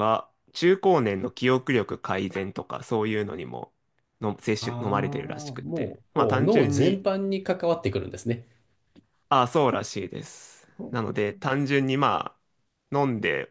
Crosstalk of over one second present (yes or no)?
yes